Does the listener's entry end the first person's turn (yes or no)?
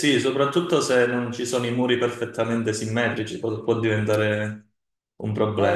yes